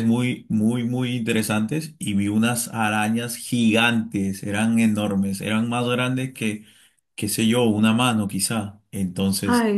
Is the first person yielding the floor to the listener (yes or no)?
yes